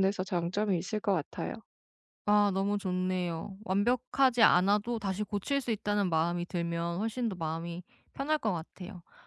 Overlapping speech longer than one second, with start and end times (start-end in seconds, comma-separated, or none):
none